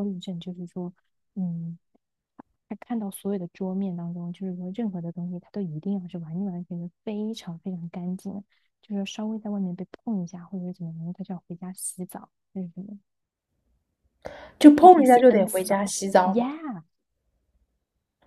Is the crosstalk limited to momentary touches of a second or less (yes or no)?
no